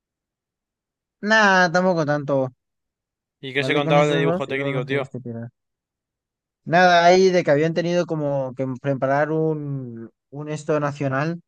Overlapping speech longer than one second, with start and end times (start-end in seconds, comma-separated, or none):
3.6-5.1